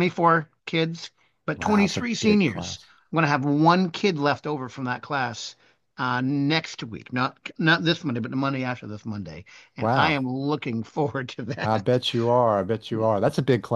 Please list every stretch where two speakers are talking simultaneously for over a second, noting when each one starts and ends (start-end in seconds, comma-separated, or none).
1.6-2.9